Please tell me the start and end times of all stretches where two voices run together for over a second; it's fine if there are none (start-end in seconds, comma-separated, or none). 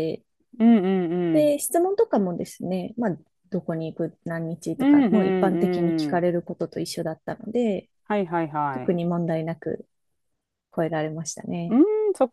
4.8-6.2